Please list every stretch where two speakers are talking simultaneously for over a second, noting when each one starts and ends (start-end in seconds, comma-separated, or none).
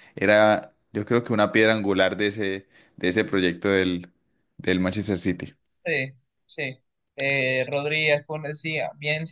none